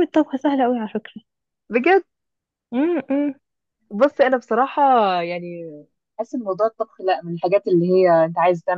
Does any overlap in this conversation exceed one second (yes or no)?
no